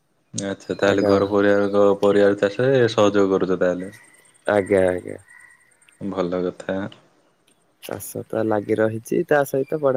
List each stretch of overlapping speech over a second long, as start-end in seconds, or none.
none